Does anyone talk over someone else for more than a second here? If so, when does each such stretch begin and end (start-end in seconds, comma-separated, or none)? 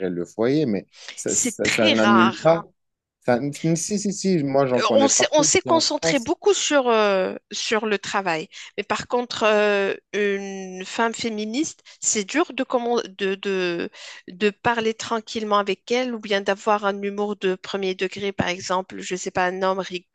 1.3-2.6, 4.8-6.3